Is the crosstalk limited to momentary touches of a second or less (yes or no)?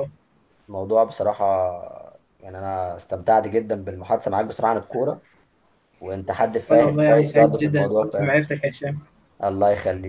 no